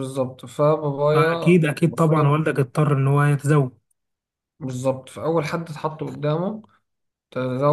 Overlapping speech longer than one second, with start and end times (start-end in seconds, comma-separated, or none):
1.1-2.5